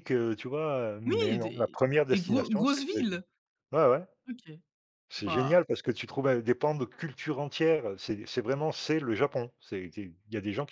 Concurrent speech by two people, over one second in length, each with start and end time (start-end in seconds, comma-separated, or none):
1.1-3.2